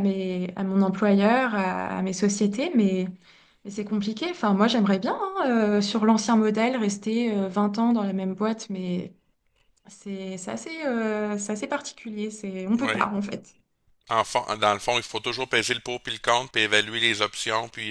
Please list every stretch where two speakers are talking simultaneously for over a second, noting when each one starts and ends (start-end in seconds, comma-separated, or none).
none